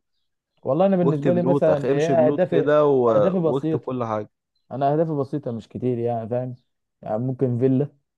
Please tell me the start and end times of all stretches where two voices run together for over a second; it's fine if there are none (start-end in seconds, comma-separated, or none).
1.0-2.7